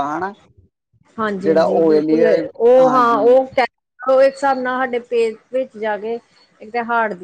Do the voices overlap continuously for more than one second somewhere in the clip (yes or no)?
yes